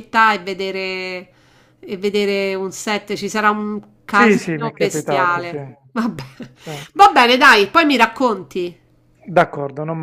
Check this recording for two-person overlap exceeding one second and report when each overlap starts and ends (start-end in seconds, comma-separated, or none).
4.1-5.6